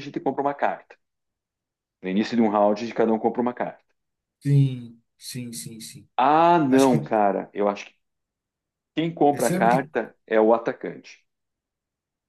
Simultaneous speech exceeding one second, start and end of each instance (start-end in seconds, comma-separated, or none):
none